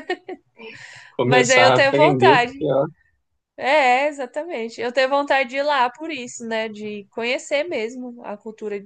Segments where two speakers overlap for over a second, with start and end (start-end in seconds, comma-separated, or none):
1.2-2.7